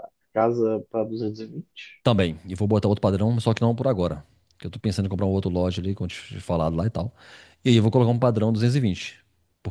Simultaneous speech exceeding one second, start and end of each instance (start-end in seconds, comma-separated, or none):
none